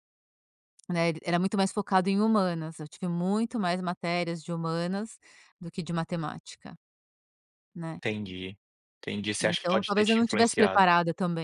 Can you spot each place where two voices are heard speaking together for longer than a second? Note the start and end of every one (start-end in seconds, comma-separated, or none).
9.4-10.8